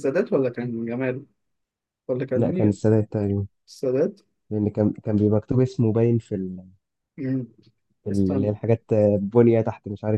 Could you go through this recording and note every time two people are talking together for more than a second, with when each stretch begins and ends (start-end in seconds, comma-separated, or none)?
none